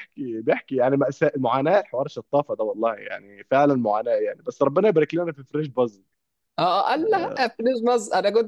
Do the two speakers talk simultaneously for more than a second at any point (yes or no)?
no